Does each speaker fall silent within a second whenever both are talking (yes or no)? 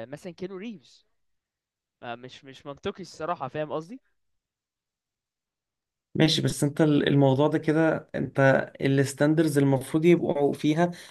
yes